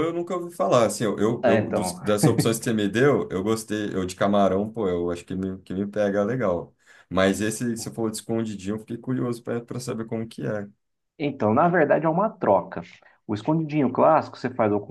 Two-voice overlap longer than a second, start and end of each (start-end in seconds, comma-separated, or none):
none